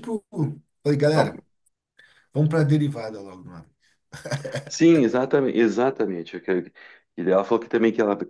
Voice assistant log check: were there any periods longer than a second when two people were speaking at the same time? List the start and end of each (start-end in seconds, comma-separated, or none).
none